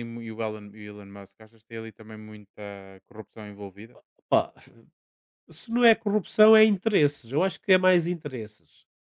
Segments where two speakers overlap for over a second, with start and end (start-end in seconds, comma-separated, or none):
none